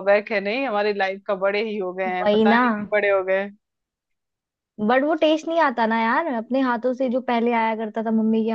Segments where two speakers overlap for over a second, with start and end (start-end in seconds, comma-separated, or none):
none